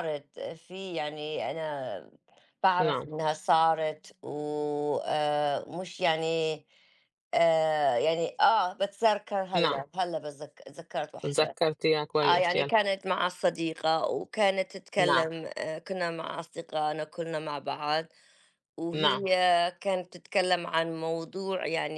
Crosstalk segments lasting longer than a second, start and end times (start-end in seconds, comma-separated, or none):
none